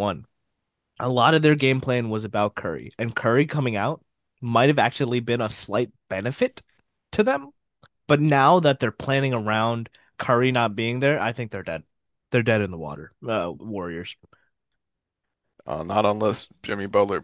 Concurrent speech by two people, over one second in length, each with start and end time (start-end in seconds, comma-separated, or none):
none